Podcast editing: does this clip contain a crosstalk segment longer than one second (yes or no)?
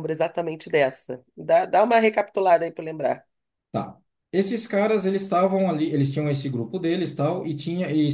no